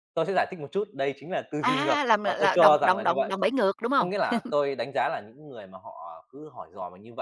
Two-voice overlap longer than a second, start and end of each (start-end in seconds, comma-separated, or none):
1.6-3.3